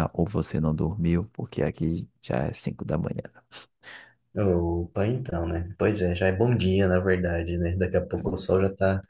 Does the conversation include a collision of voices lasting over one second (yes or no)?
no